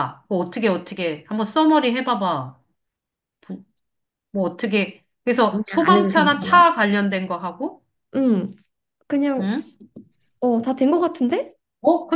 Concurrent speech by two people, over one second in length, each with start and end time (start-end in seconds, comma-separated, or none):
5.5-6.7